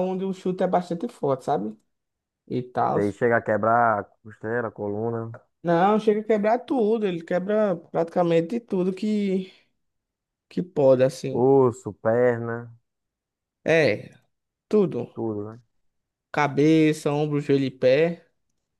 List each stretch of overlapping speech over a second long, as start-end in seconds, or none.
none